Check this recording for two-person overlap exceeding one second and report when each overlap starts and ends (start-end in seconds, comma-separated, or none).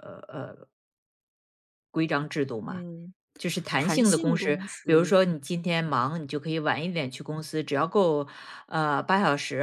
3.8-5.1